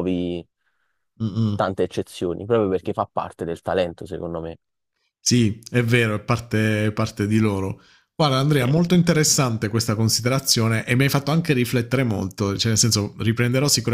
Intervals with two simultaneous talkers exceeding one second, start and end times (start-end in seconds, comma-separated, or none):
none